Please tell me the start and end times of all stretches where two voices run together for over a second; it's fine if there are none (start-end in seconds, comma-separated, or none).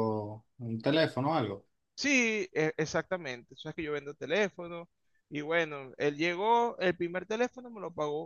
none